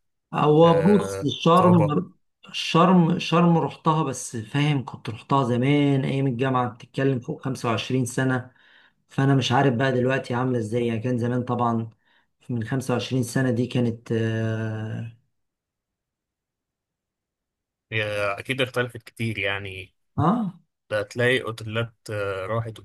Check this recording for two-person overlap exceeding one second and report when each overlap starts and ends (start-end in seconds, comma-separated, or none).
0.7-2.0